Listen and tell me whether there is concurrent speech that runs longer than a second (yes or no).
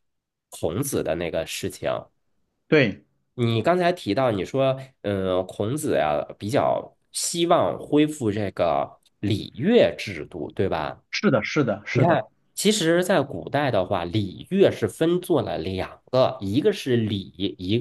no